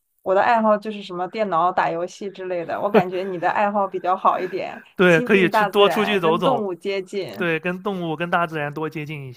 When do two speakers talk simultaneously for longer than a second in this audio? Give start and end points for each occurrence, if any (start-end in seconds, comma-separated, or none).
5.0-6.7